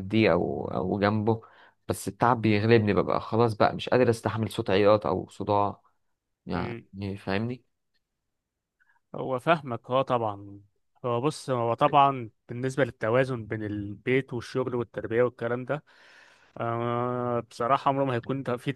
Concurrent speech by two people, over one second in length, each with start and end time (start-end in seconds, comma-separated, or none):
none